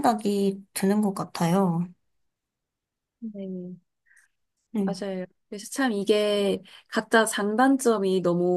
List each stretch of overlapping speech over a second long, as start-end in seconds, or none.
none